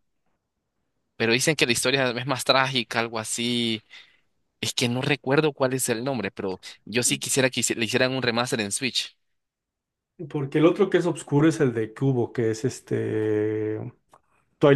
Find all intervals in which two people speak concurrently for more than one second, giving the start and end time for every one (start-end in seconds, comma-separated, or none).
none